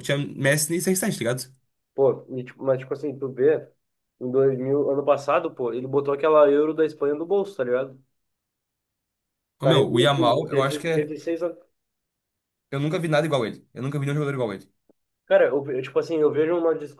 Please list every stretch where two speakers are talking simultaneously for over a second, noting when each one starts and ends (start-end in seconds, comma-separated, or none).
9.6-11.1